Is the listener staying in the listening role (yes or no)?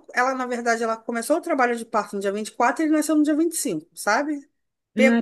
yes